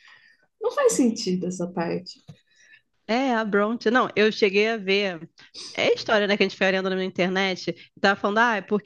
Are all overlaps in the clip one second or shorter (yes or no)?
yes